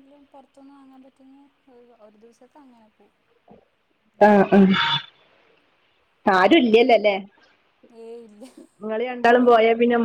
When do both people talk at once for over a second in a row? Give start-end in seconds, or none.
none